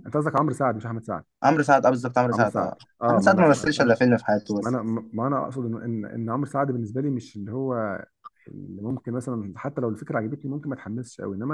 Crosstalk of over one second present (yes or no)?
yes